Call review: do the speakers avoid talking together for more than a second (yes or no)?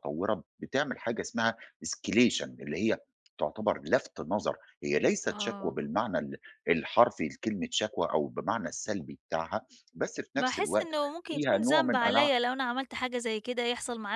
no